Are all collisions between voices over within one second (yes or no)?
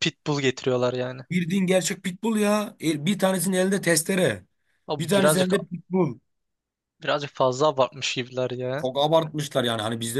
yes